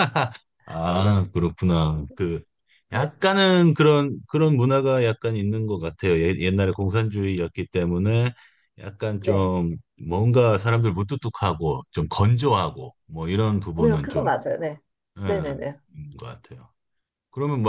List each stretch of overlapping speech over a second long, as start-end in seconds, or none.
none